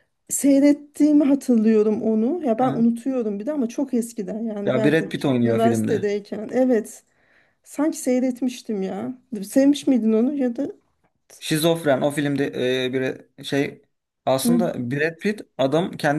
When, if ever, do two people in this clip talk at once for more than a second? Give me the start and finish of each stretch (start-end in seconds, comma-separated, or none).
4.7-6.1